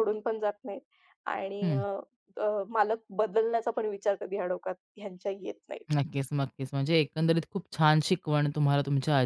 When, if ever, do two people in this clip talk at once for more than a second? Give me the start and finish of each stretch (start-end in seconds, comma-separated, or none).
none